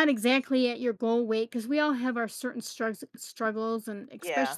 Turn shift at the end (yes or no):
no